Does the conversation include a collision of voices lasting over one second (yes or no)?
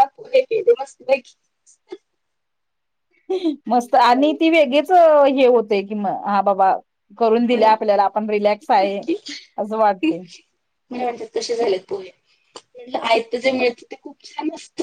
no